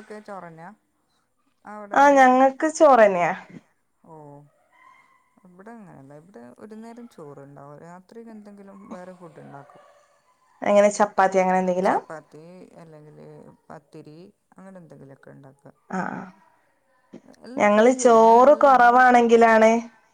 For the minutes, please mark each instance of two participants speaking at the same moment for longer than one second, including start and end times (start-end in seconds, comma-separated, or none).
17.6-19.2